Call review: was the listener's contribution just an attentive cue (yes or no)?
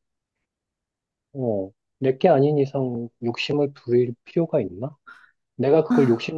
yes